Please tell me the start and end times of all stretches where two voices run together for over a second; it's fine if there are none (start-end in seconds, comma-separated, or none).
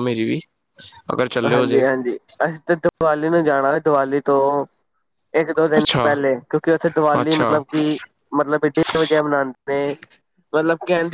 none